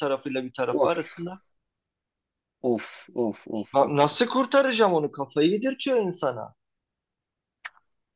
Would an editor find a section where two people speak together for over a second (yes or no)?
no